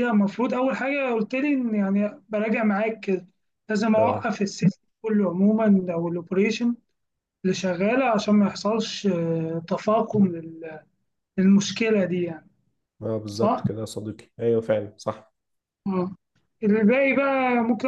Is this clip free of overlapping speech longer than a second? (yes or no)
yes